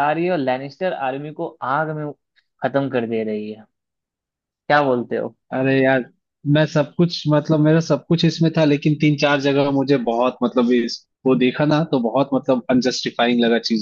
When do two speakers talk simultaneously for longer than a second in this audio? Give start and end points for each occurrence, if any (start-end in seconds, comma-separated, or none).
none